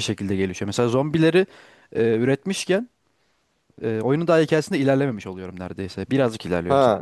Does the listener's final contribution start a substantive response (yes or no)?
yes